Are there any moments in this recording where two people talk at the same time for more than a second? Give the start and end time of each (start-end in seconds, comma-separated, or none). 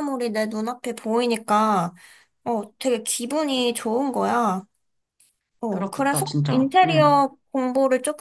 5.7-7.2